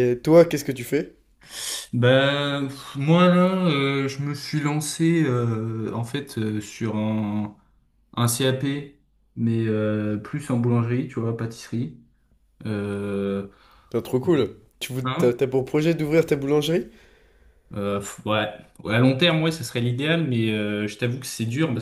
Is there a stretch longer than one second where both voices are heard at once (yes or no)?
no